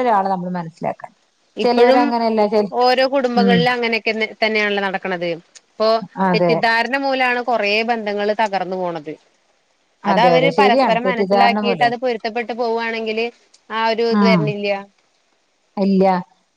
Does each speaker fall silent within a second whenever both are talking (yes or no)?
no